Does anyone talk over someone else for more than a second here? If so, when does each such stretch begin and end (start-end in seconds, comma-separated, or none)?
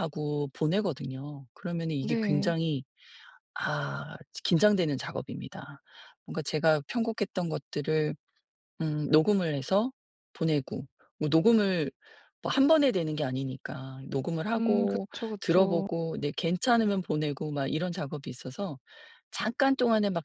14.5-15.9